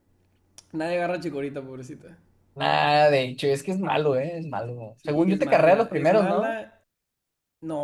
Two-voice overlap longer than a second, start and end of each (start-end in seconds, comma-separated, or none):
5.0-6.6